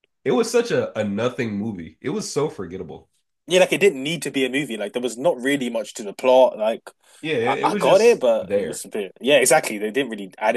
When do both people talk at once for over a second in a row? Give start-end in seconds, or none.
7.4-8.8